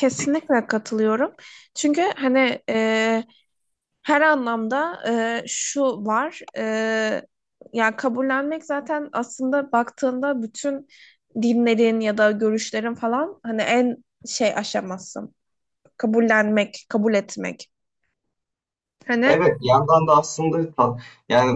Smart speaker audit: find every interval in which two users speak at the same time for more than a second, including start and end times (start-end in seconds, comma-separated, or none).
none